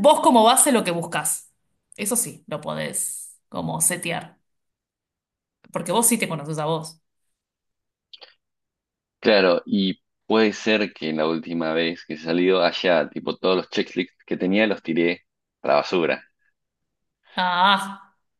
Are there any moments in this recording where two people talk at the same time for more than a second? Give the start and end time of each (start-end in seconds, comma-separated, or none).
none